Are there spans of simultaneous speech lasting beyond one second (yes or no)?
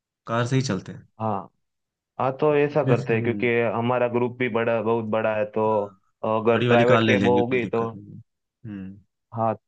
yes